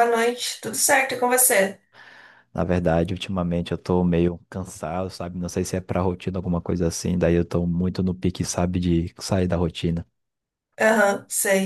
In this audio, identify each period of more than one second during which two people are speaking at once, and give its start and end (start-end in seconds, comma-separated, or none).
none